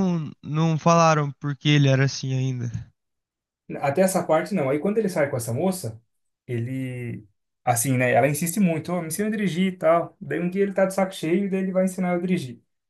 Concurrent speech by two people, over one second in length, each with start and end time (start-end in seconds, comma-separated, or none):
none